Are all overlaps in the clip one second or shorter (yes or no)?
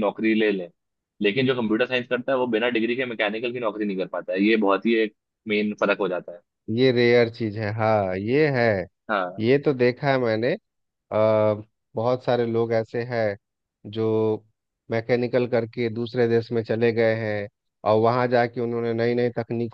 yes